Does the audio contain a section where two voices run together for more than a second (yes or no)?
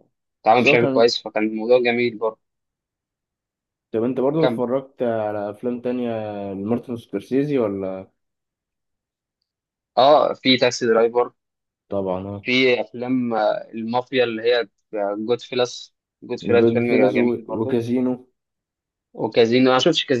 yes